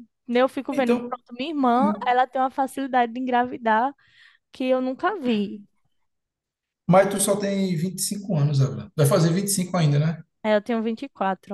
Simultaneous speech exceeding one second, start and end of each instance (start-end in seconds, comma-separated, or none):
none